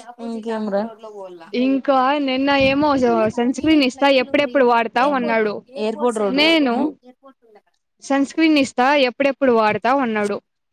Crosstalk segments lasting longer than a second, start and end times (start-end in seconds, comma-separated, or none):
3.4-5.5